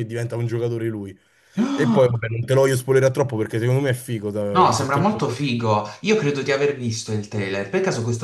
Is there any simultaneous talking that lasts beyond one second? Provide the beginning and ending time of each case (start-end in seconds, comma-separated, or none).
none